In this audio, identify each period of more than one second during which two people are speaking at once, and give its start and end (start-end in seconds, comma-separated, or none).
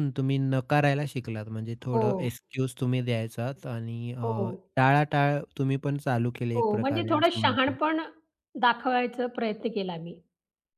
6.6-7.8